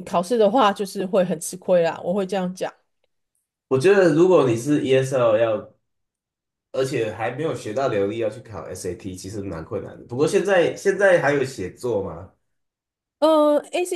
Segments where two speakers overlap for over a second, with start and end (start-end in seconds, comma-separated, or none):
none